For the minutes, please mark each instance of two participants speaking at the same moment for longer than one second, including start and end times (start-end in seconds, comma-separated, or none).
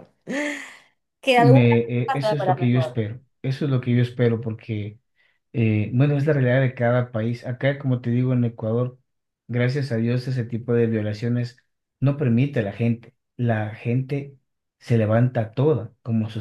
1.4-3.0